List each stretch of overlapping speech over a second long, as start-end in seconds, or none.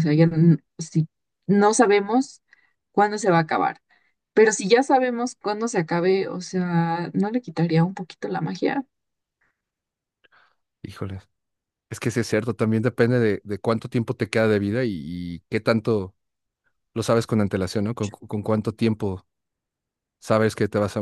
none